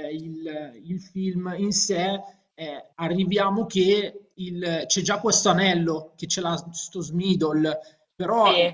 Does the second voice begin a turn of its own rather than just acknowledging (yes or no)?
no